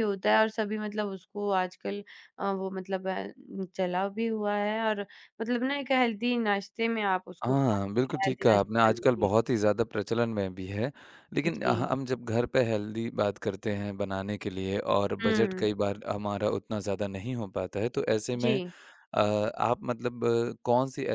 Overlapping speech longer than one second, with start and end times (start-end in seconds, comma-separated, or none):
7.4-9.3